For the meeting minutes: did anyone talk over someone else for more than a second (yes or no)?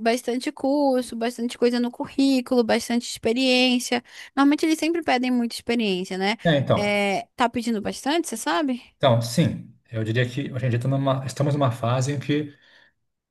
no